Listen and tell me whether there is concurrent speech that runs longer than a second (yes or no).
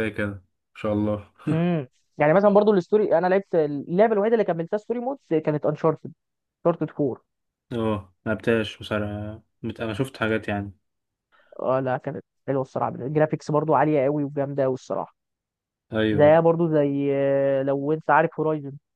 no